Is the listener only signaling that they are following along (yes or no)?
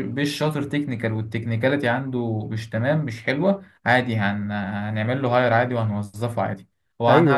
no